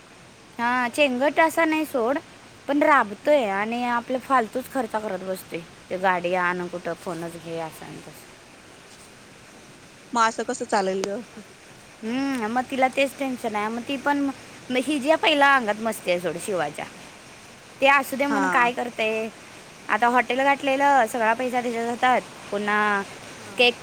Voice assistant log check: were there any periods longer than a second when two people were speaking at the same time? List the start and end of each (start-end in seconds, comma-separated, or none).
none